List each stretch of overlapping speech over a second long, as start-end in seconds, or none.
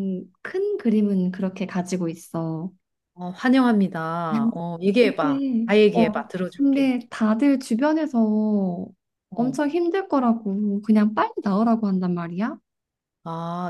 5.0-6.9